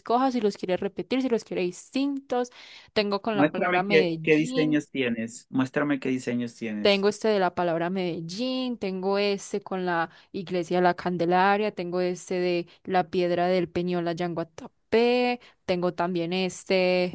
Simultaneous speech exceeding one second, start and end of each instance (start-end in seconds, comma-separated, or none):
3.3-4.8